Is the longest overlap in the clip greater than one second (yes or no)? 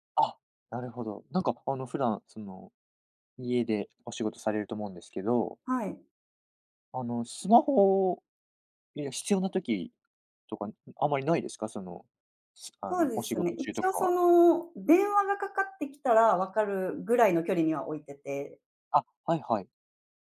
yes